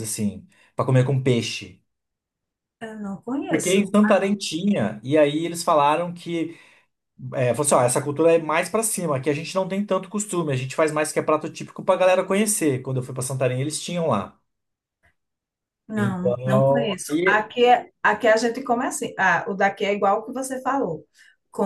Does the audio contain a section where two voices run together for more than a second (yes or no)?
yes